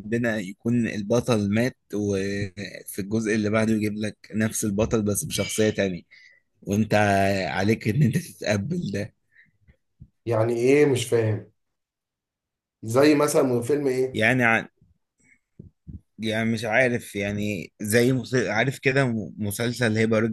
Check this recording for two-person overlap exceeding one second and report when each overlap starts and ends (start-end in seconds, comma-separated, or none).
none